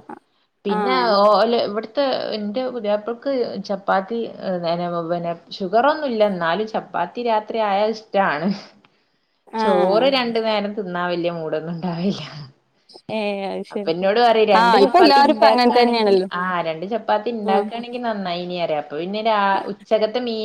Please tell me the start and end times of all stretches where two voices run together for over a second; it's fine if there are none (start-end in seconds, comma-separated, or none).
14.6-16.3